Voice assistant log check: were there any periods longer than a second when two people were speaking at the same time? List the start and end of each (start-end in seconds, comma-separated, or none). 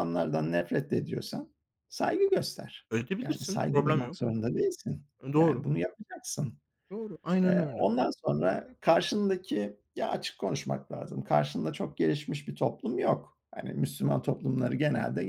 2.9-4.2